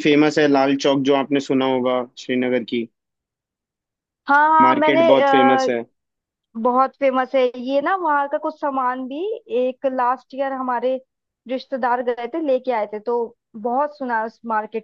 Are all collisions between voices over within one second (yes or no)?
yes